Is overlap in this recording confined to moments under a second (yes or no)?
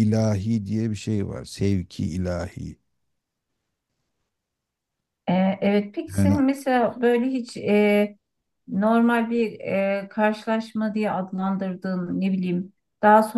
yes